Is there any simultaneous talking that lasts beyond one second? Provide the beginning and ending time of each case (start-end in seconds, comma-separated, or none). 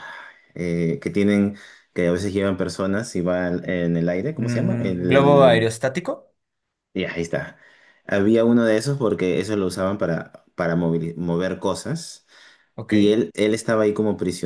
4.4-5.7